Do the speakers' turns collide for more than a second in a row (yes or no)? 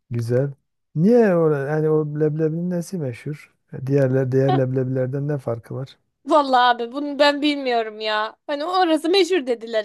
no